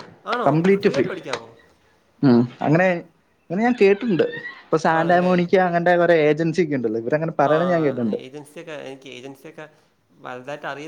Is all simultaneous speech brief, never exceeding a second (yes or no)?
yes